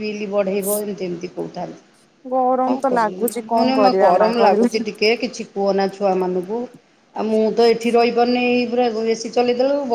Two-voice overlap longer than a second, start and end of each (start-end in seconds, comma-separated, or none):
2.7-4.7